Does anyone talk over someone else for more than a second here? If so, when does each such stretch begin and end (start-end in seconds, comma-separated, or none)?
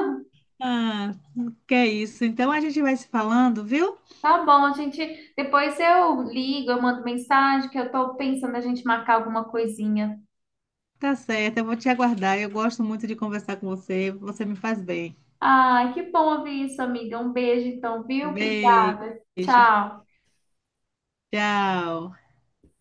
18.2-19.7